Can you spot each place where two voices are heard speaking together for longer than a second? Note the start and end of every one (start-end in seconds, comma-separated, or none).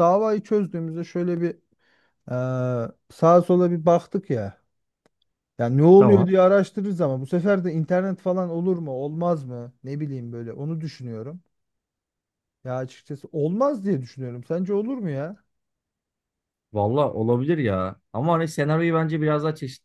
none